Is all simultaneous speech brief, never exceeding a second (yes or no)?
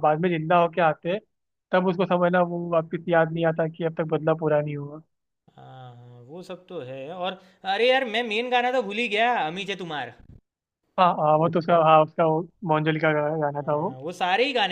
yes